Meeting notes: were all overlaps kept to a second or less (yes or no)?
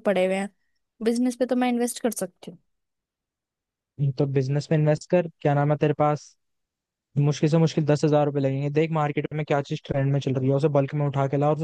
yes